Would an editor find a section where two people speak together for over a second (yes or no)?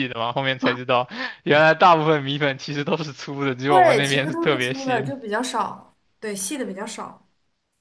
yes